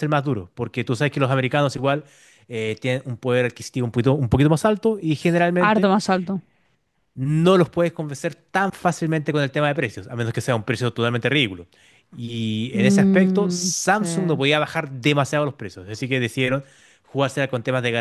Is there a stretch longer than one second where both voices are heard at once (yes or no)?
yes